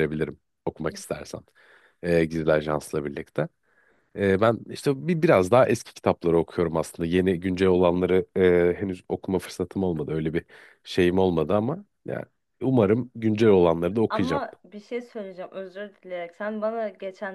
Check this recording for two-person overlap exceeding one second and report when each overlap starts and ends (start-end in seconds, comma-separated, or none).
none